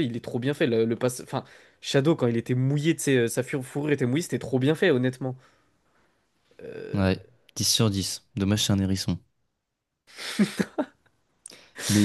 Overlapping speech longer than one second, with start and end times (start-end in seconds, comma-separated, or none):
none